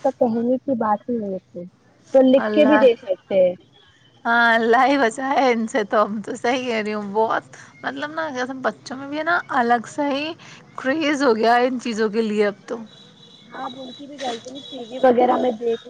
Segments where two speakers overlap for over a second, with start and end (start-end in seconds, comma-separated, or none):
none